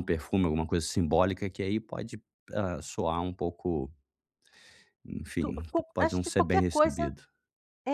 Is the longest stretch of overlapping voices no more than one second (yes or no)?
no